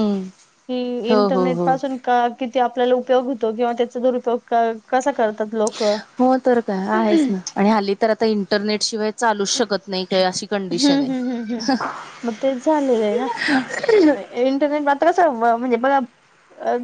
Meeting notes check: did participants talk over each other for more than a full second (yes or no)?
no